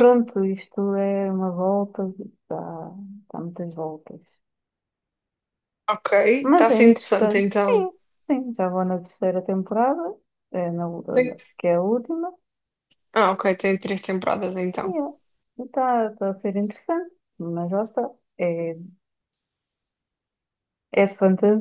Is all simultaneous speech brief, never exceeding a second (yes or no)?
no